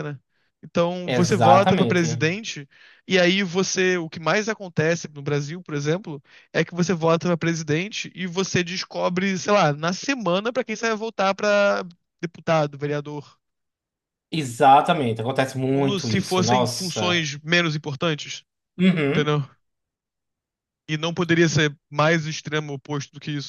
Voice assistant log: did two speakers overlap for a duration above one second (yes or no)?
yes